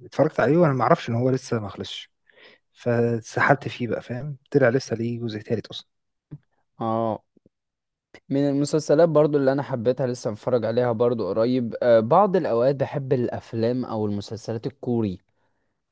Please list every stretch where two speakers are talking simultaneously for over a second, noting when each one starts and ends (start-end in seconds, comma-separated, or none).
none